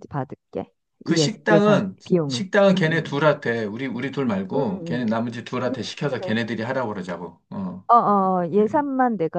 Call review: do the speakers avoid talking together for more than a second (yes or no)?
no